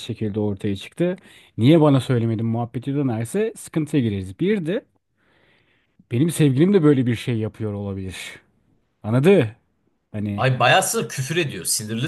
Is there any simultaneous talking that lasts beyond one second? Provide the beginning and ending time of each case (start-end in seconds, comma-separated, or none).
none